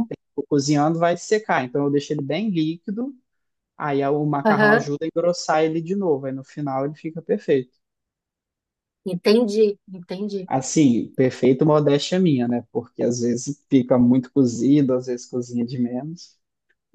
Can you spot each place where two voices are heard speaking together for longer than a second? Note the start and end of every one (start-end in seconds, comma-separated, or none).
none